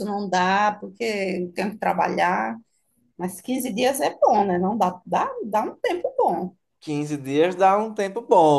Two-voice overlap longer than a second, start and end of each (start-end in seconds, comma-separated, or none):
none